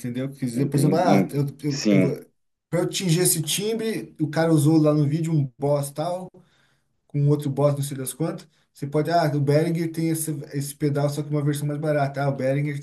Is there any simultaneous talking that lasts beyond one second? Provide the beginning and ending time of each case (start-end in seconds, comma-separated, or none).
0.5-2.1